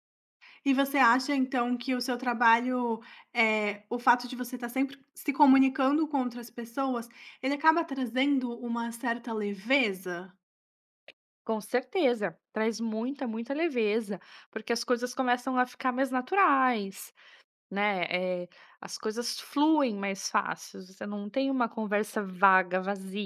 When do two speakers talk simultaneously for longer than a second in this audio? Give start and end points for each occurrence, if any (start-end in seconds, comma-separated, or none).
none